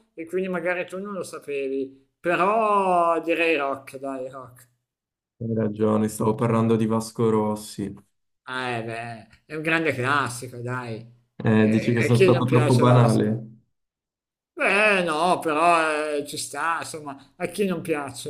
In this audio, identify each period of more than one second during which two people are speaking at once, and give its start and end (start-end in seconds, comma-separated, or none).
11.5-13.4